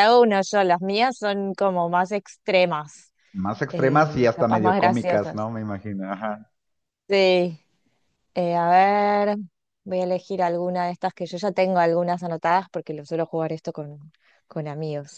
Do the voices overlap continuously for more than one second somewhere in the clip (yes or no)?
yes